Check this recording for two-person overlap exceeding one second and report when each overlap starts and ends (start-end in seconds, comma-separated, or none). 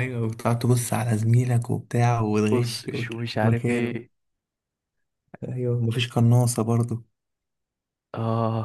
2.5-4.0